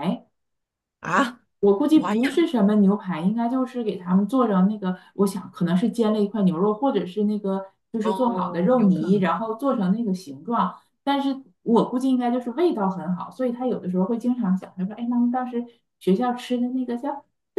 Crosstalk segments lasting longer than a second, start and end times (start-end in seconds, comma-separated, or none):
8.0-9.3